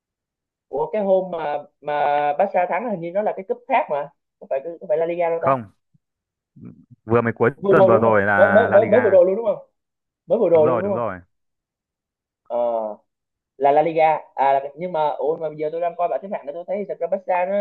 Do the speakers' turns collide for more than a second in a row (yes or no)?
yes